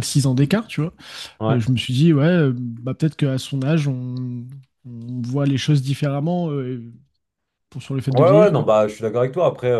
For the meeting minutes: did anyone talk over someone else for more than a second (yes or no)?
no